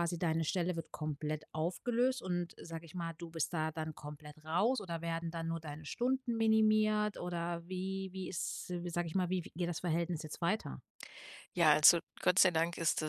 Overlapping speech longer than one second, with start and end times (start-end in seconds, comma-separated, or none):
none